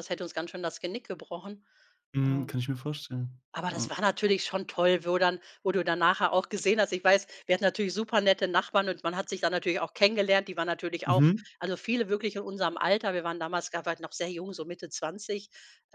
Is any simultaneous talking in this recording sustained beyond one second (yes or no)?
no